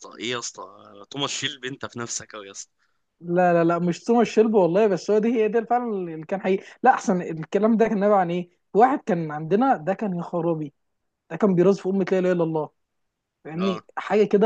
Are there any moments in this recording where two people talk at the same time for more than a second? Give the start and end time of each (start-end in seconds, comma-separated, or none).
none